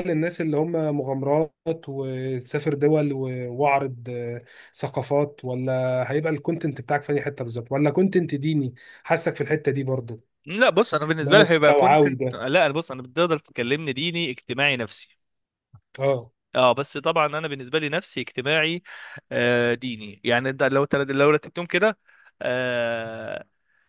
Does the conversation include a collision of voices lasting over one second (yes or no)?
yes